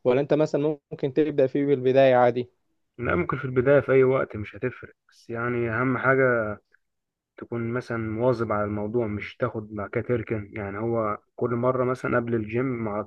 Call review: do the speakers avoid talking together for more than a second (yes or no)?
yes